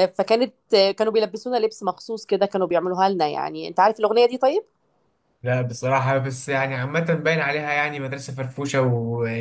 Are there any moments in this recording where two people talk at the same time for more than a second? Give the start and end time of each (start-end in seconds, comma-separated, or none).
none